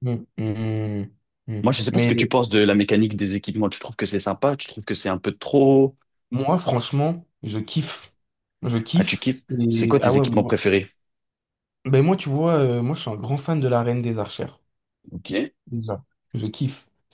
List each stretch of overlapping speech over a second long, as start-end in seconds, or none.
8.9-10.6